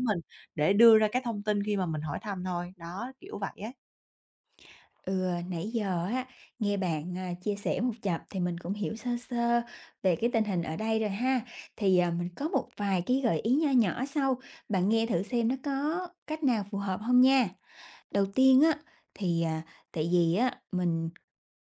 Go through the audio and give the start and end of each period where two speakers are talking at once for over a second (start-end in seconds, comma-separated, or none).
none